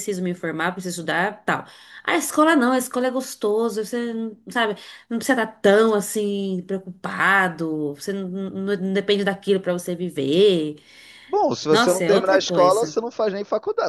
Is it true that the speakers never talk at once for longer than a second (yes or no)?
no